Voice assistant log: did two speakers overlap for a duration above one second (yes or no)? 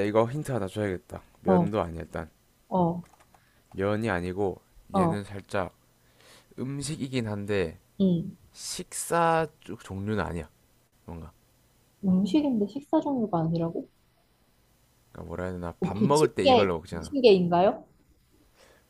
yes